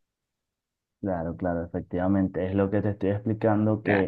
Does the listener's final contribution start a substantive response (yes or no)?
no